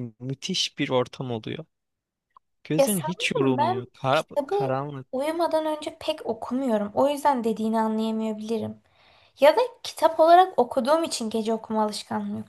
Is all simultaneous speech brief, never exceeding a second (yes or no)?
no